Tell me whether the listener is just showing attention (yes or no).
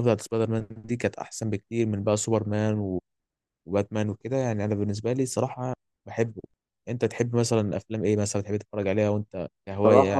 no